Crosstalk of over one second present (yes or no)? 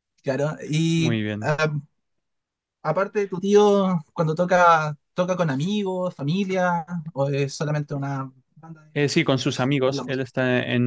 yes